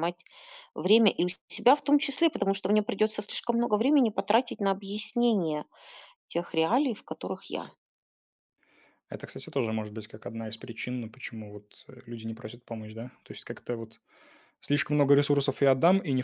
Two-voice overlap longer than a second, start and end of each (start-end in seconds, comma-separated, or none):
none